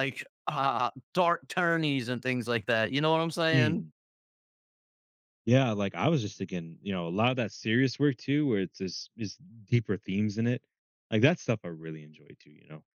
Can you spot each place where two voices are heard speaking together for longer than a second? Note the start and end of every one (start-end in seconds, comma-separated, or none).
none